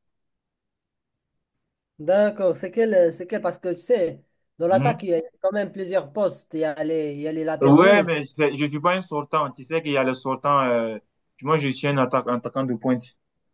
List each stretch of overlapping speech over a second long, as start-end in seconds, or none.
none